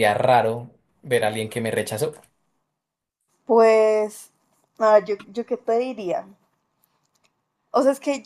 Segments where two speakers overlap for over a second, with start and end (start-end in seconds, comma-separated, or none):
none